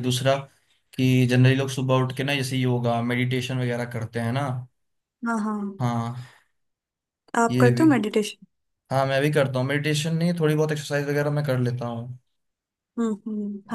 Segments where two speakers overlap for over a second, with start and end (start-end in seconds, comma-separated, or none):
none